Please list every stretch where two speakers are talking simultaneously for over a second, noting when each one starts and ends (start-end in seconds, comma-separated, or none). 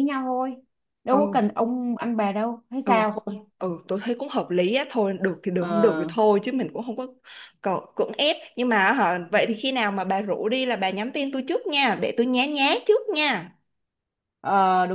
none